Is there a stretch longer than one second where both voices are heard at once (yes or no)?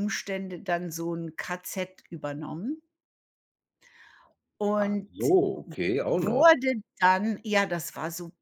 no